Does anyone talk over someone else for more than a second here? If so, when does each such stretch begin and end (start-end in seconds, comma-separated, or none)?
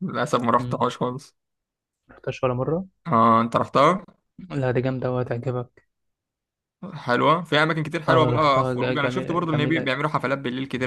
8.1-9.9